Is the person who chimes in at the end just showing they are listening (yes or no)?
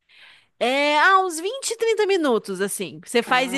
yes